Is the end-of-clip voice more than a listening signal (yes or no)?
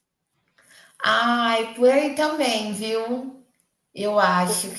no